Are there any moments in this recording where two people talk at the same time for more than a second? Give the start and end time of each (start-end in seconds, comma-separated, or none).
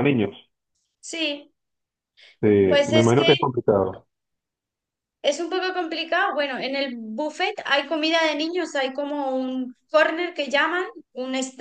none